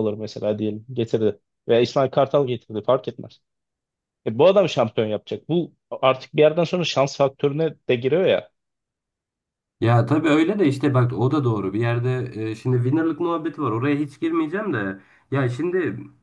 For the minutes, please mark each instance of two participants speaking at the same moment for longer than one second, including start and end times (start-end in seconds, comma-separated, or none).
none